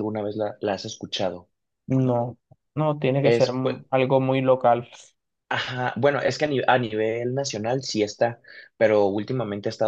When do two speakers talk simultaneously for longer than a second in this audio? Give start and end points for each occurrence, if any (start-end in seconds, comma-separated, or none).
none